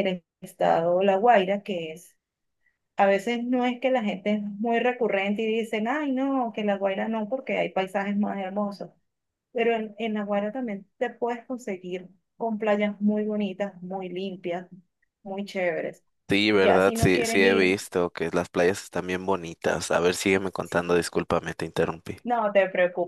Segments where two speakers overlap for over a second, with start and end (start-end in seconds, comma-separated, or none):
16.5-17.8